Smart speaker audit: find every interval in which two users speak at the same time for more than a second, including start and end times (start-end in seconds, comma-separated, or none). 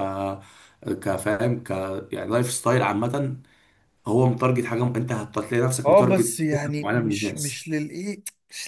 5.8-7.6